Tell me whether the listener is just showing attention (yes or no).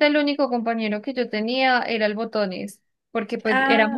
yes